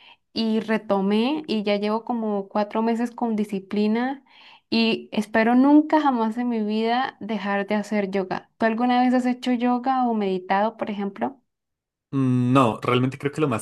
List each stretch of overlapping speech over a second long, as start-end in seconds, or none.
none